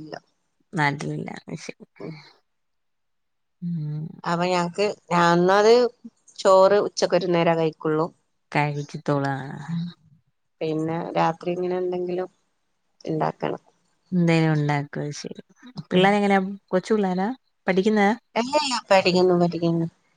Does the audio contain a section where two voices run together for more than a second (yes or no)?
no